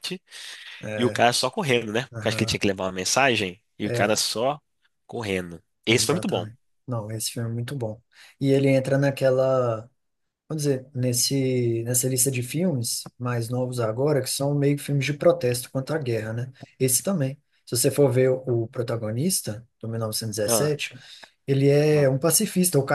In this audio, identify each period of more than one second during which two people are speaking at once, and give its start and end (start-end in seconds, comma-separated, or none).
none